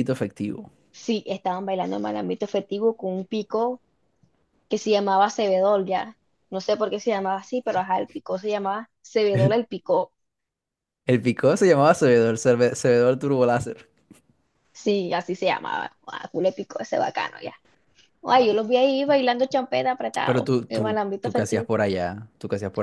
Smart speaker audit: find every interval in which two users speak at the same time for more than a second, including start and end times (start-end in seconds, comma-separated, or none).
20.2-21.7